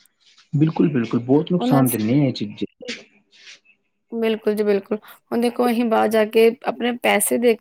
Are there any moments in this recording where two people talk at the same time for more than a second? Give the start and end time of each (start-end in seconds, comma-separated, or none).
none